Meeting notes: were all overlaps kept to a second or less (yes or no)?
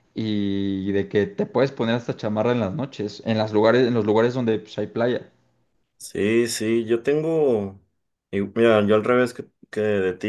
yes